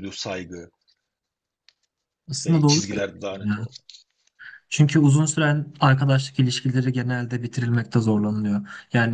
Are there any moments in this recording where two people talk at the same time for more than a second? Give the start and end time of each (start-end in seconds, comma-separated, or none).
2.4-3.7